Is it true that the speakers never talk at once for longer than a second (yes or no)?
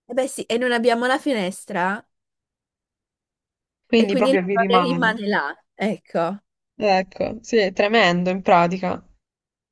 no